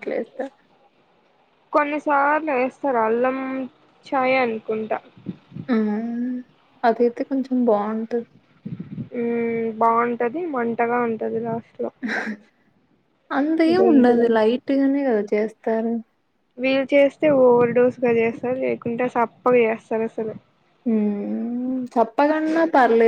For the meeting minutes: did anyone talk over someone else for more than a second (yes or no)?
no